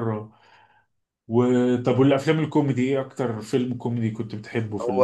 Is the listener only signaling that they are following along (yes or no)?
no